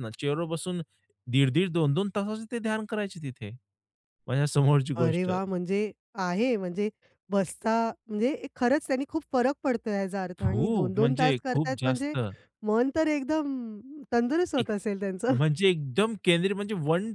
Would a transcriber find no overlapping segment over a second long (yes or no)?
no